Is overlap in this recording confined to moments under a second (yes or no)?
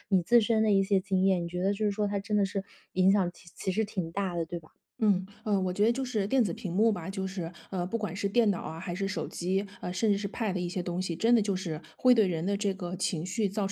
yes